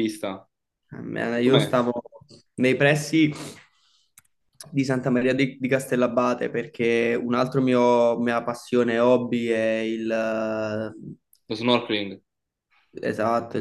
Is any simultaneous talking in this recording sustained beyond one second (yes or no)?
no